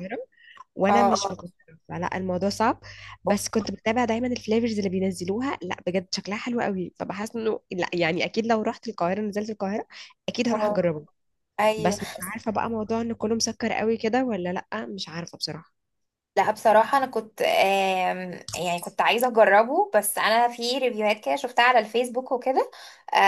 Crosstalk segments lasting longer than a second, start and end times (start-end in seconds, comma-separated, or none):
none